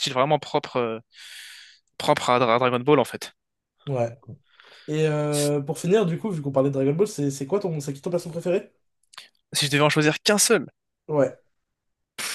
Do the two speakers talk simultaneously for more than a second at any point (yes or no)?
no